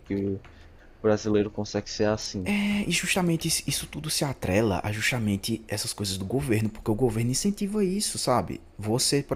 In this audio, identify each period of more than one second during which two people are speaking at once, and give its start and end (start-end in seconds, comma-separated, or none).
none